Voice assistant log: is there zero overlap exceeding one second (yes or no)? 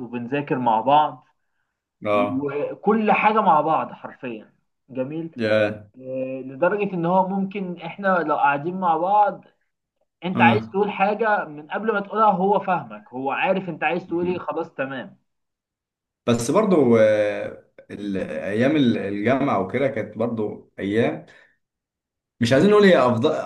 yes